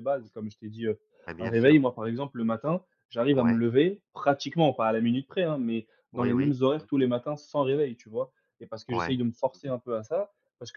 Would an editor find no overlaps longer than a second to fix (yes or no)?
yes